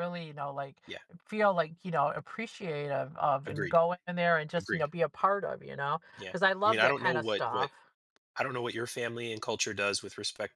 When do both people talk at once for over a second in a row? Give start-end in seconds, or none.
6.2-7.7